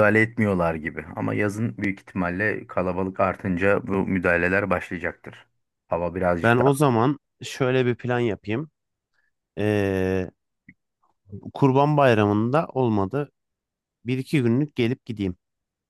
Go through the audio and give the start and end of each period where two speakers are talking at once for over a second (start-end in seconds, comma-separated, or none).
none